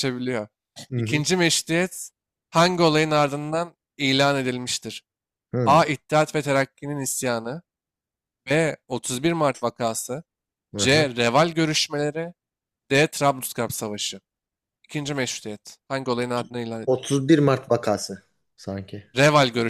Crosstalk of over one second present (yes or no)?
no